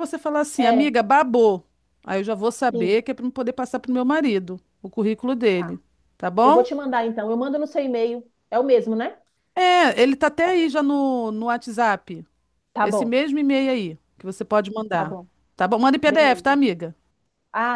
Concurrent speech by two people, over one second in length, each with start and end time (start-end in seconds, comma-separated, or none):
none